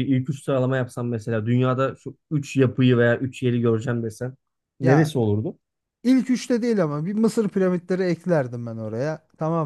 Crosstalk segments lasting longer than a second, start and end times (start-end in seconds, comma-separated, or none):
none